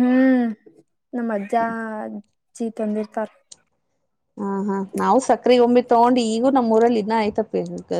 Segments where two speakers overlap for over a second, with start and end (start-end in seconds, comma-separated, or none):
none